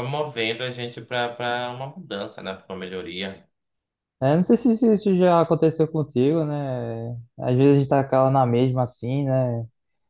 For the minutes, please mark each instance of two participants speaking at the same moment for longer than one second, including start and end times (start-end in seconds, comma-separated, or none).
none